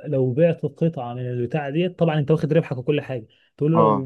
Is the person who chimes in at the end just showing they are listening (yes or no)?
yes